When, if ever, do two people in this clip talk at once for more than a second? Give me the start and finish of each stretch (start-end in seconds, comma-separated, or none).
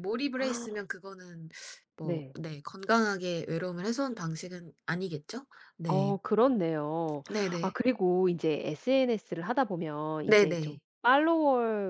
none